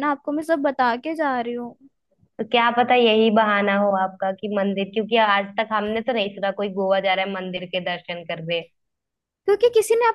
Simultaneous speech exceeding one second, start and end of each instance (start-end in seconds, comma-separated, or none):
none